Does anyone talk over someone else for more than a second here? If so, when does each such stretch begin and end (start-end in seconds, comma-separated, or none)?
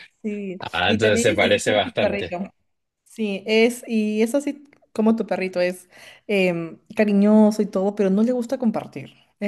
0.6-2.4